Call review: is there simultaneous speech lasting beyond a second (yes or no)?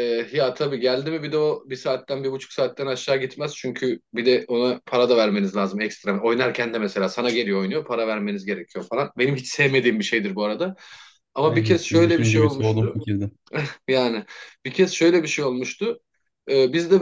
yes